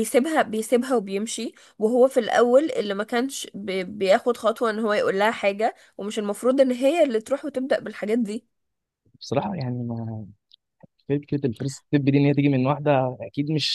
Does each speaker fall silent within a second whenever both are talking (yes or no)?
yes